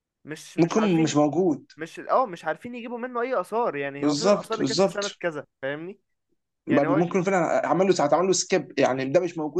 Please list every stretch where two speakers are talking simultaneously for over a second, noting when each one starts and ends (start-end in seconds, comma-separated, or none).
4.0-5.2